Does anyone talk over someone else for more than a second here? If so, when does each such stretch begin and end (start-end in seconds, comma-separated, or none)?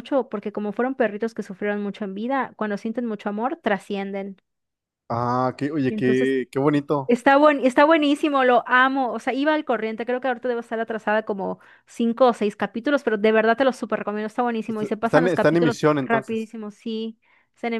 14.7-16.6